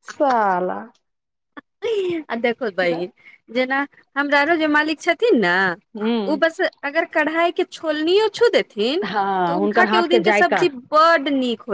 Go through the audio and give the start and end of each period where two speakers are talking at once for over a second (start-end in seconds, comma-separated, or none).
9.0-10.7